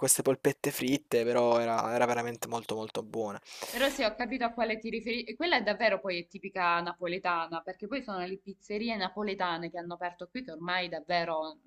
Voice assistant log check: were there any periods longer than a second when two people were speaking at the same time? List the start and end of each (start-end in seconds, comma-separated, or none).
none